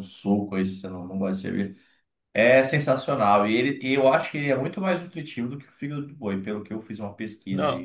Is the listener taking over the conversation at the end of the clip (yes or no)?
yes